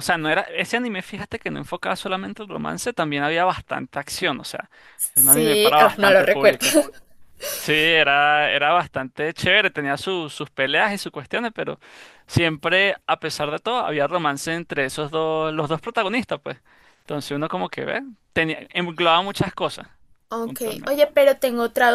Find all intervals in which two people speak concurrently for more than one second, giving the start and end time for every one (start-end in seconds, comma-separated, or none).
5.1-6.7